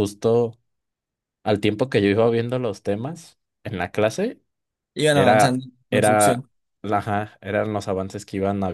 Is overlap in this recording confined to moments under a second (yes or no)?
no